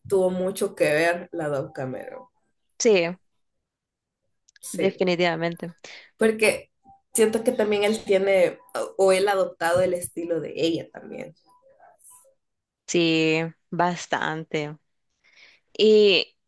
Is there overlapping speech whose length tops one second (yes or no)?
no